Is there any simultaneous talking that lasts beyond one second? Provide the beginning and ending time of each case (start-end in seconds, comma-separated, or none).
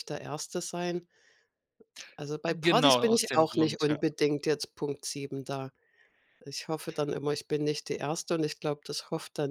2.5-4.0